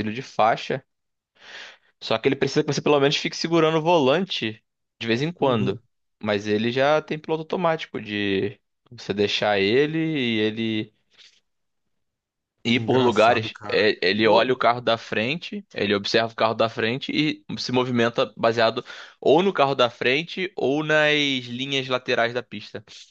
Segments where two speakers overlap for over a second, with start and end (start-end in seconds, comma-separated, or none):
12.7-14.6